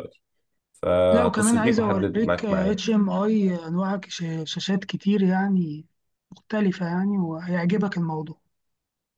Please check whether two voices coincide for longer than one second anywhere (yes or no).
yes